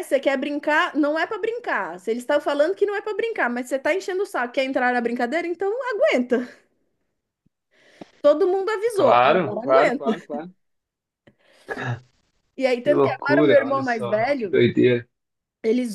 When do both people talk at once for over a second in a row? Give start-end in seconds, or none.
8.9-10.3, 12.8-14.5